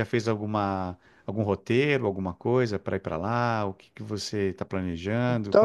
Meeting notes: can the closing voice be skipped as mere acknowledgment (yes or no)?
no